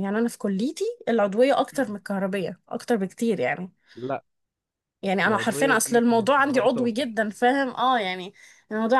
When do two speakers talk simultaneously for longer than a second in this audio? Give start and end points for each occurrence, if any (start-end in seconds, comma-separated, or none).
5.3-7.2